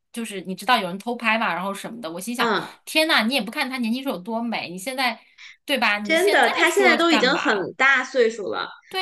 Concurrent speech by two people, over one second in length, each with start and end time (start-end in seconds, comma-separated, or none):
6.0-7.7